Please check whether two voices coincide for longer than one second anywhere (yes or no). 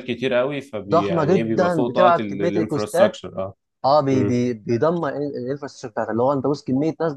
yes